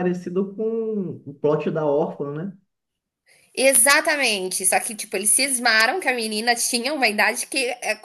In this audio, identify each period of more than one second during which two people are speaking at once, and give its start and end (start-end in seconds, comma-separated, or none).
none